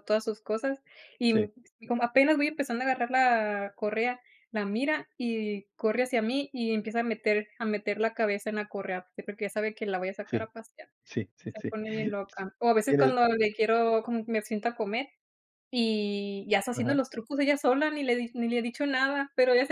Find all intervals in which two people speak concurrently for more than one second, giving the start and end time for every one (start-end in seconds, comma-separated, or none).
none